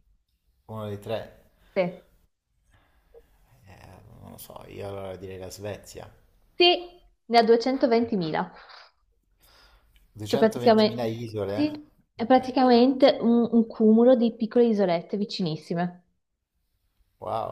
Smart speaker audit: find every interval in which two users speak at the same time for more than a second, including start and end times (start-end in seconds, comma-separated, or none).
10.2-11.6